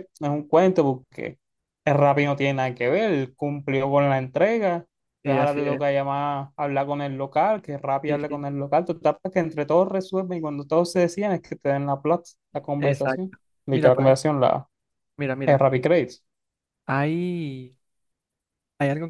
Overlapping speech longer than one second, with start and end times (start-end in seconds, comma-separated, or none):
12.8-14.2